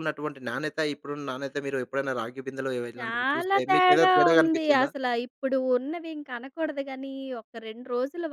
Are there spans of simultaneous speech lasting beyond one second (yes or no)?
yes